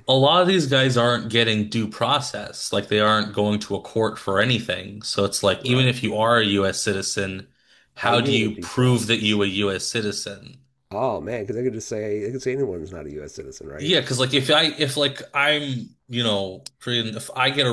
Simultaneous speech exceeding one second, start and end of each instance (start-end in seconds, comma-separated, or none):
8.0-9.4